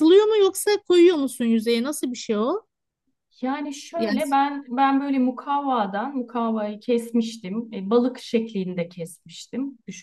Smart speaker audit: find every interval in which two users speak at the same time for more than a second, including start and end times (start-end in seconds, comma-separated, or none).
none